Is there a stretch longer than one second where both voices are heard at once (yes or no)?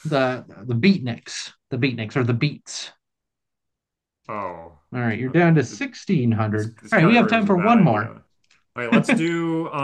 yes